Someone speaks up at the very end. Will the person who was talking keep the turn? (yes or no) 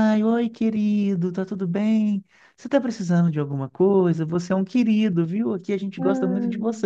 yes